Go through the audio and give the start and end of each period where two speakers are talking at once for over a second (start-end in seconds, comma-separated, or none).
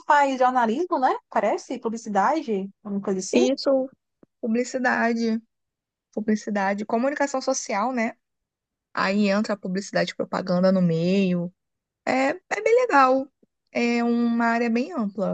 none